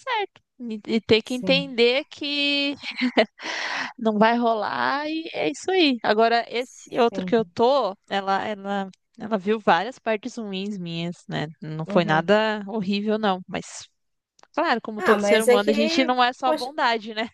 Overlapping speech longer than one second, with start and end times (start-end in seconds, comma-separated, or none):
15.0-16.7